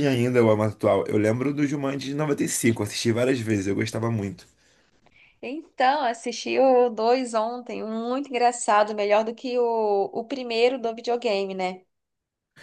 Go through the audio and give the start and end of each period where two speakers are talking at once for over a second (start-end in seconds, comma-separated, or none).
none